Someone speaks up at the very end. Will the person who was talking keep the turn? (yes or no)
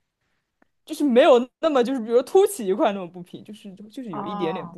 no